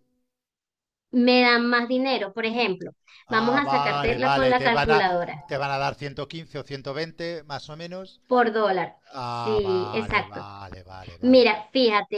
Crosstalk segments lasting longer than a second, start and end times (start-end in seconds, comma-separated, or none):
3.3-5.0, 9.1-10.4